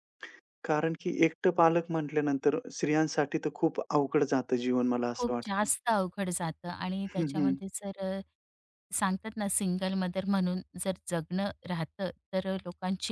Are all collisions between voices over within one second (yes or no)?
yes